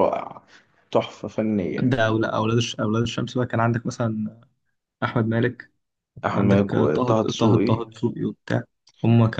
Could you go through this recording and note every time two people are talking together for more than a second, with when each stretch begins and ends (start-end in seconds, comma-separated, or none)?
6.3-7.7